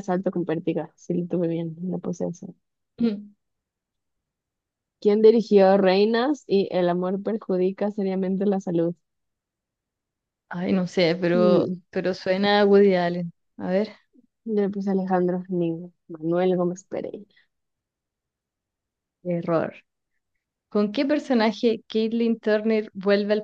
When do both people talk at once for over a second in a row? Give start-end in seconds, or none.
none